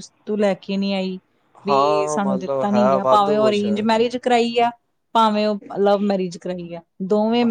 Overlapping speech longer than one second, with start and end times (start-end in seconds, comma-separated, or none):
1.7-3.6